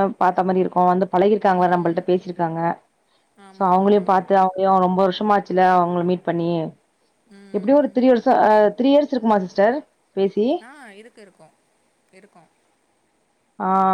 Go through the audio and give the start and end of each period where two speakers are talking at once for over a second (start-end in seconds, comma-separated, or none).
none